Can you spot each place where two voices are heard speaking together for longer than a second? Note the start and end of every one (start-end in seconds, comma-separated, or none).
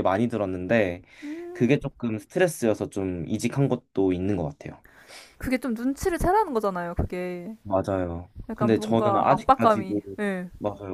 8.5-9.9